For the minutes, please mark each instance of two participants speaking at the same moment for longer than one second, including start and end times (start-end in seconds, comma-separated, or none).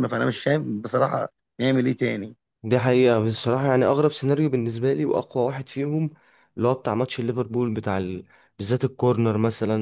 none